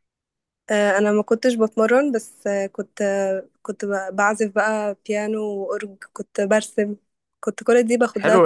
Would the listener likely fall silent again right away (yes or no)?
no